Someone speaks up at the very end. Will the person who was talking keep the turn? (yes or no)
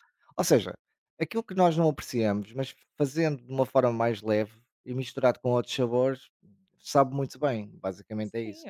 no